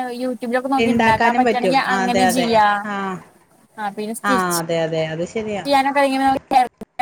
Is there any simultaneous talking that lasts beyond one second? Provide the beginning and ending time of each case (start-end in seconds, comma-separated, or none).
0.8-2.5